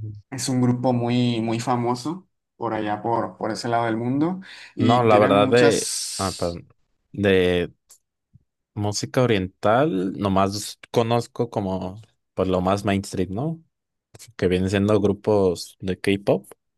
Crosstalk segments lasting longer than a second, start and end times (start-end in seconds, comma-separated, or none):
4.8-6.6